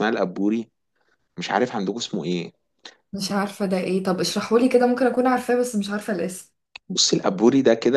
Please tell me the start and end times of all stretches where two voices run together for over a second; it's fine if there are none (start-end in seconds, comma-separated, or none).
none